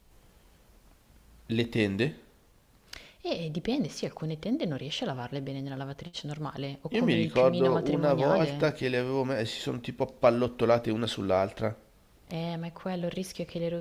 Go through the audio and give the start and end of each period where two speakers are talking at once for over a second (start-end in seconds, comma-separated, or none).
6.9-8.7